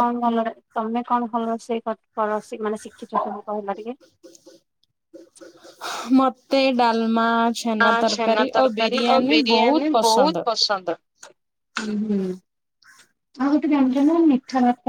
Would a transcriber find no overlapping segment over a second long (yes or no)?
no